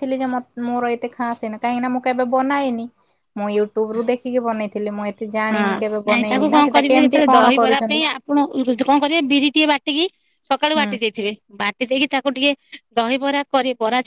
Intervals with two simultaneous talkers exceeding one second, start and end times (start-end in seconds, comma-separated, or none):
5.5-8.1